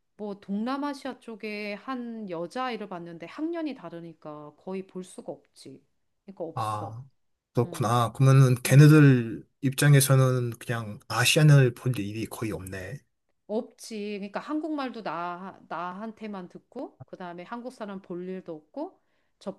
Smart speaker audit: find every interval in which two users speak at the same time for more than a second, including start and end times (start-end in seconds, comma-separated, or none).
none